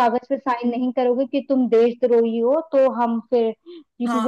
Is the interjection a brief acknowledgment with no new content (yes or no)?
no